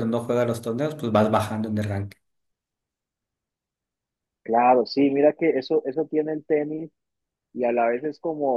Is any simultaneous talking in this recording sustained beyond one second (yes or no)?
no